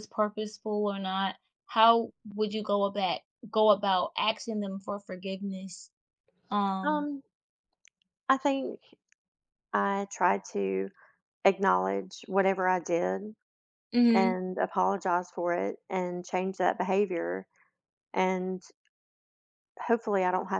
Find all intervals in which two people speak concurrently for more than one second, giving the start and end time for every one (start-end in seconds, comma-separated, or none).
none